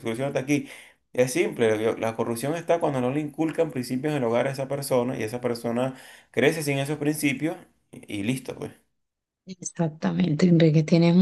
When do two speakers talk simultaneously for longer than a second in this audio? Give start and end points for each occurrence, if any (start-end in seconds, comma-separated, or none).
none